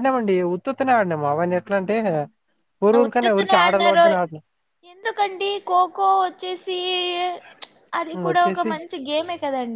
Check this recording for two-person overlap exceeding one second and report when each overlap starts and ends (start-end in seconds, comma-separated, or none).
none